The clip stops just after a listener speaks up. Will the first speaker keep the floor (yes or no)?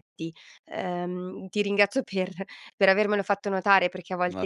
yes